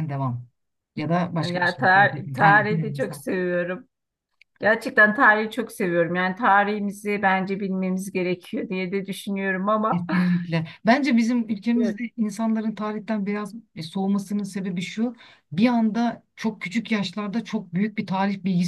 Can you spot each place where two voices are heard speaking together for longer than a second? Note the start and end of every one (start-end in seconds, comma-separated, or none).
1.4-3.2